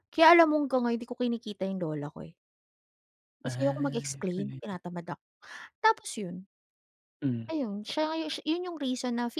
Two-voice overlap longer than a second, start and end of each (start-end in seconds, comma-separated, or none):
3.4-4.8